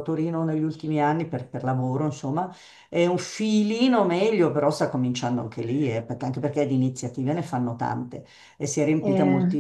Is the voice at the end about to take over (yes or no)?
no